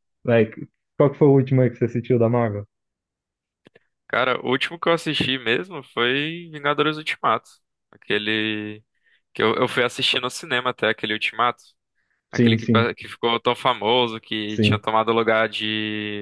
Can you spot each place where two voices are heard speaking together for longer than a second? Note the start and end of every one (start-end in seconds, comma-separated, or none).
none